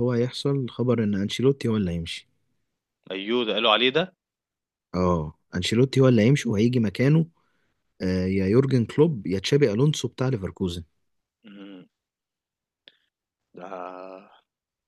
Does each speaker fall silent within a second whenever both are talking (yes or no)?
yes